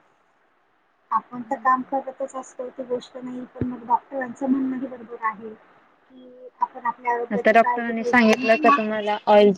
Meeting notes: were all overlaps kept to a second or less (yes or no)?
no